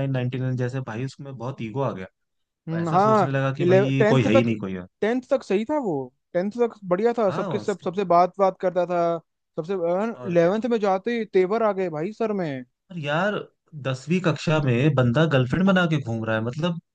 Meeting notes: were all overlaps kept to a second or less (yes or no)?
no